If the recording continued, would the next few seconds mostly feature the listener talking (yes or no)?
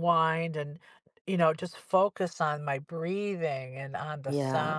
no